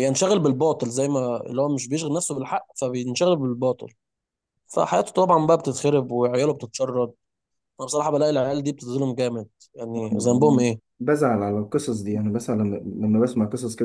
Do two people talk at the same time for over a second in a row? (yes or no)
no